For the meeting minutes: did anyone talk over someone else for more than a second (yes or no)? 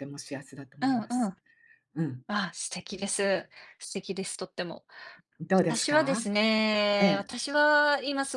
no